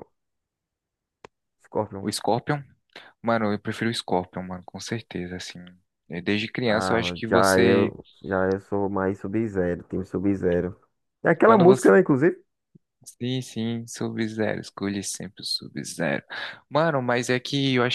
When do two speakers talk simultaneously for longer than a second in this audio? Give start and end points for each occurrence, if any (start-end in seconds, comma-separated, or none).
6.7-7.9